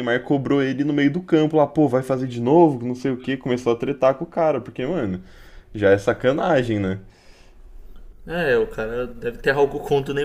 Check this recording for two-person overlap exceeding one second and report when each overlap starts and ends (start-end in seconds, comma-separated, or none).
none